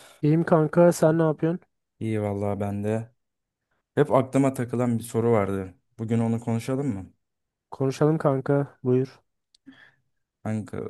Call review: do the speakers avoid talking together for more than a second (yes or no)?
yes